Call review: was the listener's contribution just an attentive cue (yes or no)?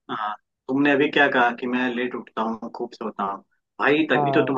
yes